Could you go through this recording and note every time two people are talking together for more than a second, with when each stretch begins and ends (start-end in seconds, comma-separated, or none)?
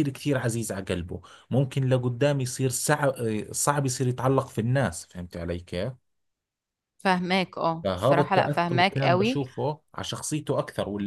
7.8-9.4